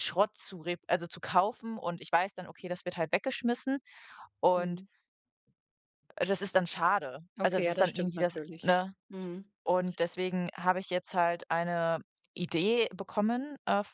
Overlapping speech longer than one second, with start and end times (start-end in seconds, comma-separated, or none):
7.4-8.9